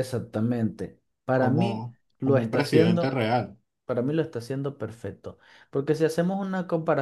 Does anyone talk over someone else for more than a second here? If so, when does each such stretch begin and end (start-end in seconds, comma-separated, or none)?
1.4-3.2